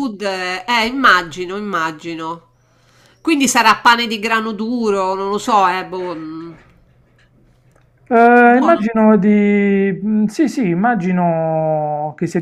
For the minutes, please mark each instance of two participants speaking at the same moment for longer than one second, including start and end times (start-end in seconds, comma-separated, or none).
none